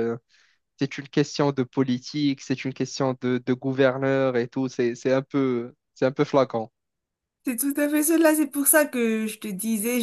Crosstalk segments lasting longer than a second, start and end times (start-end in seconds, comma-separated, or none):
none